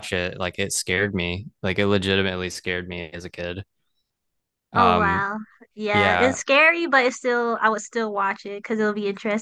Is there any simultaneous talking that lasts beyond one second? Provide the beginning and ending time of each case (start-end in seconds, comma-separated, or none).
none